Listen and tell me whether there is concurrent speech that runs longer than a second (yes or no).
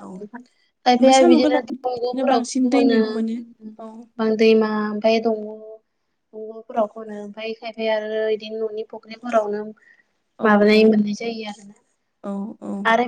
no